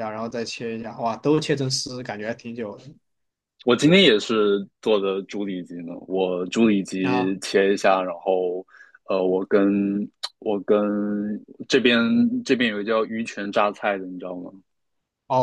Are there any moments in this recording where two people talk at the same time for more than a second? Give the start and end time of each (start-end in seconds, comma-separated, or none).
none